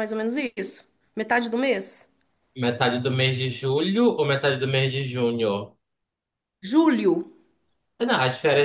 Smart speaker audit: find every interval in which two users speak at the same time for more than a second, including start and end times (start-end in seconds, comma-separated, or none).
none